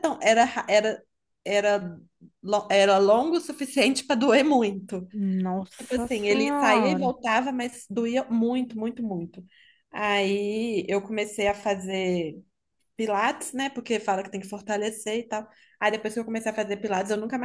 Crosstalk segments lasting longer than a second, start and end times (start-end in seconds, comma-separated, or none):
5.8-7.1